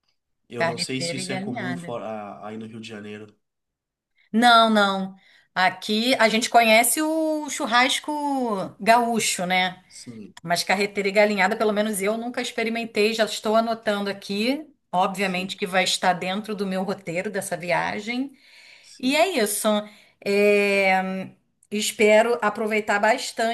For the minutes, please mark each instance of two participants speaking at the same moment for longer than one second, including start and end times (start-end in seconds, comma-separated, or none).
0.6-1.9